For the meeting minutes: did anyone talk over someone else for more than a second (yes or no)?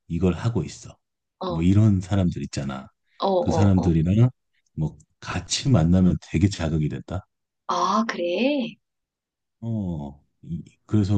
no